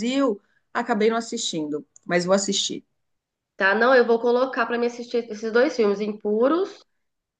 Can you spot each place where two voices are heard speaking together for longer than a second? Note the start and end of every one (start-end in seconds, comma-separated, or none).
none